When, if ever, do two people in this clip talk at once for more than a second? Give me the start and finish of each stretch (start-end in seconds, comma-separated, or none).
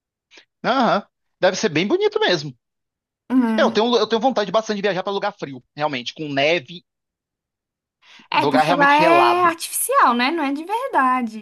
8.3-9.6